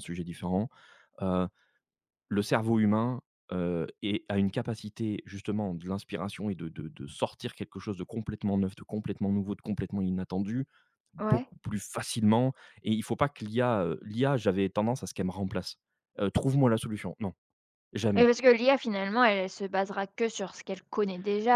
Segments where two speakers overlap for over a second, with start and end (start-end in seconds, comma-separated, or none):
none